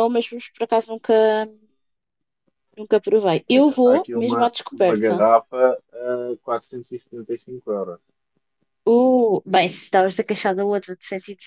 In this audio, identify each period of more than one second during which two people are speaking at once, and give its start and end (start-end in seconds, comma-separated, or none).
3.5-5.2